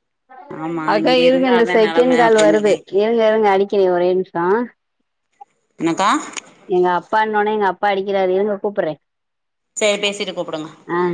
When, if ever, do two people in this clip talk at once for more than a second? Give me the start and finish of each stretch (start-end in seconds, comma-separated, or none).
0.9-3.2